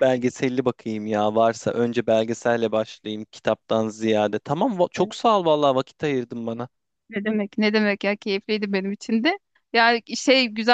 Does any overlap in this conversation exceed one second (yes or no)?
no